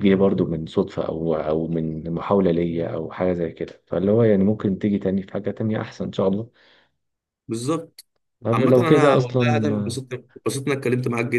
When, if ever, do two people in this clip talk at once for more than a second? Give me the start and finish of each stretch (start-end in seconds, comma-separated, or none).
8.5-10.0